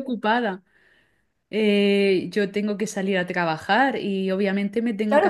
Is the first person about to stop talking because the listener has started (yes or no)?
yes